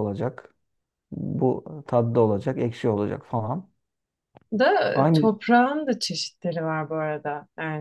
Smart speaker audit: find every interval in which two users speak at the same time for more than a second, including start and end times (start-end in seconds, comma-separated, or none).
none